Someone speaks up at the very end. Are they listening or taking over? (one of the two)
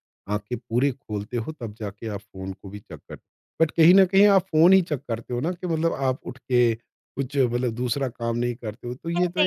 taking over